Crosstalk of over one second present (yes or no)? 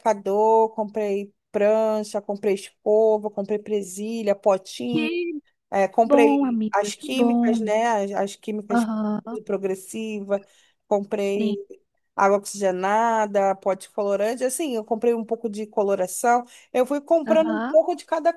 yes